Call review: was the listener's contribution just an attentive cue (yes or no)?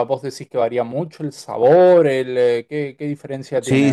no